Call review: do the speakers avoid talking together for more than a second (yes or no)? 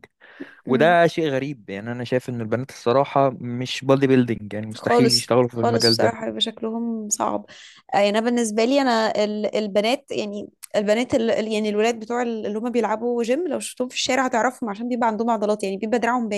no